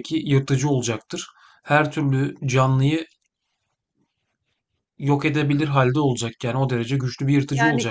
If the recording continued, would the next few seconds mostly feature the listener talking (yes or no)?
yes